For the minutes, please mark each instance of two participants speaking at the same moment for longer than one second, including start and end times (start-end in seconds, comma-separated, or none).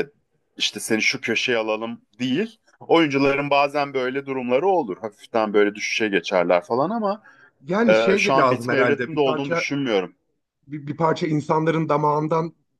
7.9-9.7